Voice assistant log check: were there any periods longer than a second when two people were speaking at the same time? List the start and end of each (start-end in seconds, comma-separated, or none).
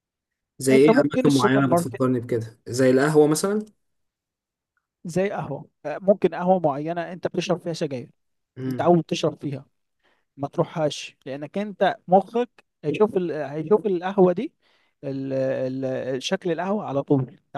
0.7-2.0